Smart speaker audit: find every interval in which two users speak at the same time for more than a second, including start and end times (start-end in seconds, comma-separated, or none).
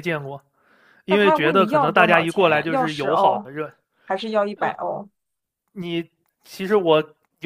1.1-3.5